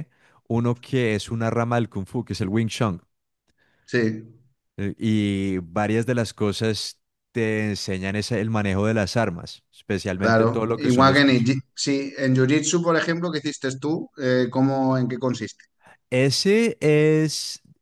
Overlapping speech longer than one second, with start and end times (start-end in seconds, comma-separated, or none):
10.2-11.6